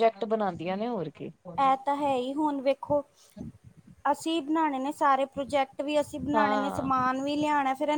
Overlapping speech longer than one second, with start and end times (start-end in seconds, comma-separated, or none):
none